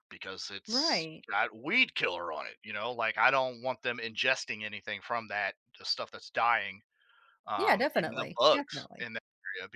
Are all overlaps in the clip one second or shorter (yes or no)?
no